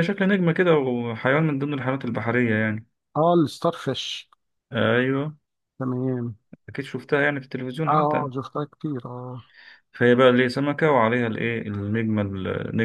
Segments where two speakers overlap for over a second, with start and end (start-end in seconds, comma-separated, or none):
none